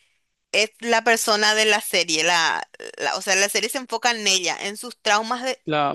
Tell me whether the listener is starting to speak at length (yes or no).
no